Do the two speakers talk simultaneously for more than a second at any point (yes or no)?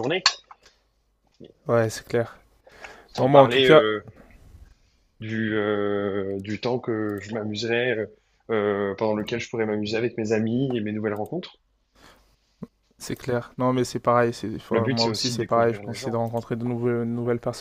yes